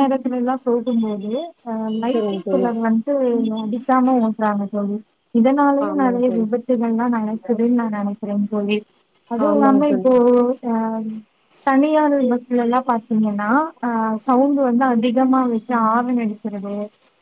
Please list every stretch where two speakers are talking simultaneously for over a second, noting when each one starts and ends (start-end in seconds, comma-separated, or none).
none